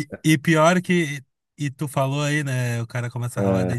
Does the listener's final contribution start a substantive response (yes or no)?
no